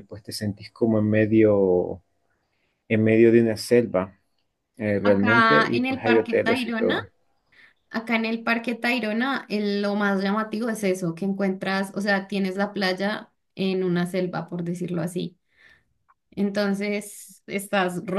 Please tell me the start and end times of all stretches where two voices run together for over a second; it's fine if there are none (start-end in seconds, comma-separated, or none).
5.0-7.0